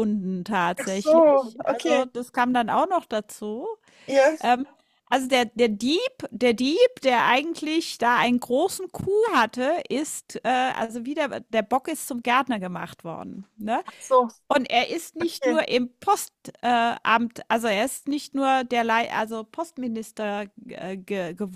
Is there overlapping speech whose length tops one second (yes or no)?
yes